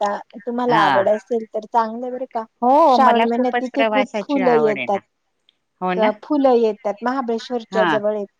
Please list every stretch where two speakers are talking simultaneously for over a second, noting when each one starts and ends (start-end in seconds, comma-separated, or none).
2.9-5.0